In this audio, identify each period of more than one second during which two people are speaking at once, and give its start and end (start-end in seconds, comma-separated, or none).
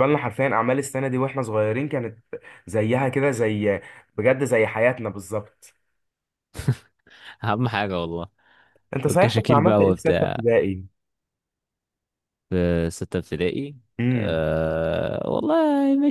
9.1-10.4